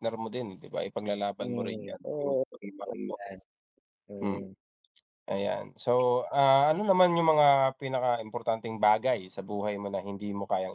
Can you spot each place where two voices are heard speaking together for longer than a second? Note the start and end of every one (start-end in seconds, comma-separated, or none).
1.4-3.2